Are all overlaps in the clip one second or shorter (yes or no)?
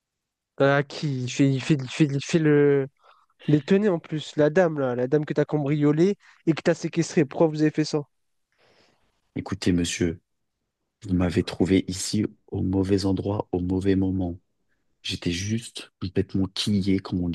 yes